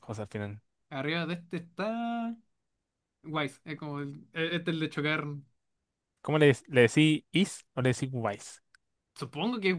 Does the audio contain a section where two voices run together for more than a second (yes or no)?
no